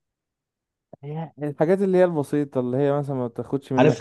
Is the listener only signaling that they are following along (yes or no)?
no